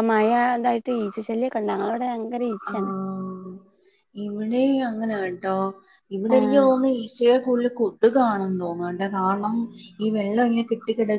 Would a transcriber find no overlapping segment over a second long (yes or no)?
yes